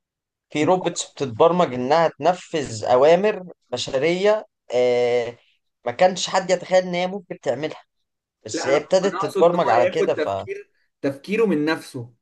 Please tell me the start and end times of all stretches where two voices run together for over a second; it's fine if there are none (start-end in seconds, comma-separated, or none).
8.5-10.5